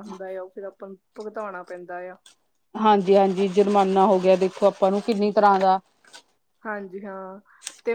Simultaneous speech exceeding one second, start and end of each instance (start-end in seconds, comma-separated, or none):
none